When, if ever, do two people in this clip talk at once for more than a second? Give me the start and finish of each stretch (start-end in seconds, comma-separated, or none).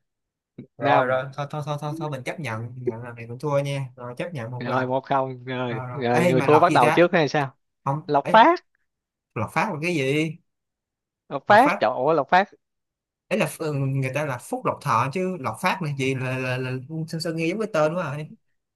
5.7-7.1